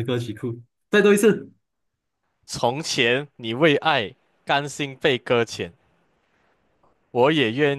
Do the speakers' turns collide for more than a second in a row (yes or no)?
no